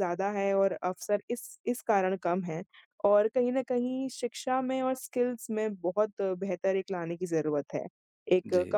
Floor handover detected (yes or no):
no